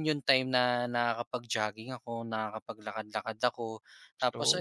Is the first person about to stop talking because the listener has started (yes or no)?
no